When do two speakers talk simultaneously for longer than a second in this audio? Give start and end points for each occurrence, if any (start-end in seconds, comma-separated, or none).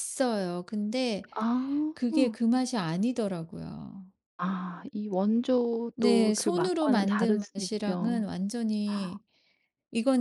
6.0-8.2